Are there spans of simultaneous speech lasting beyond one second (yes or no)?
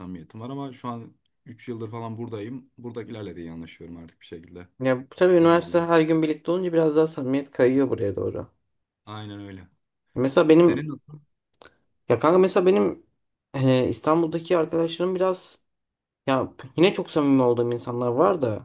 no